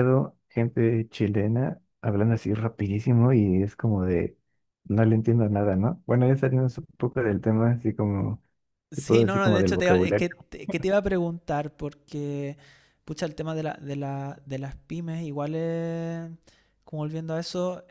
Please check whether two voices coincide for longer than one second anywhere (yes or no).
yes